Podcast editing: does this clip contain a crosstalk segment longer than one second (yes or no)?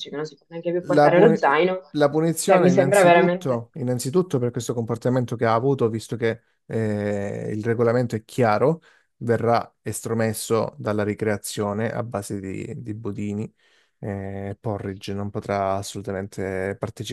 yes